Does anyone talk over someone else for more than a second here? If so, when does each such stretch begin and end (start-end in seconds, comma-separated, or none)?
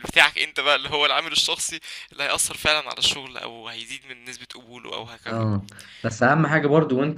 none